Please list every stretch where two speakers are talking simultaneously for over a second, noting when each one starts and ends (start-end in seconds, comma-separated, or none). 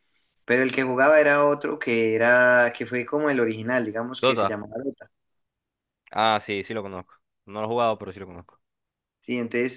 none